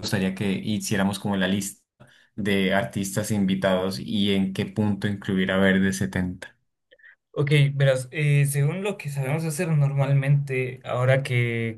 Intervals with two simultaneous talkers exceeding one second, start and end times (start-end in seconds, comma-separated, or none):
none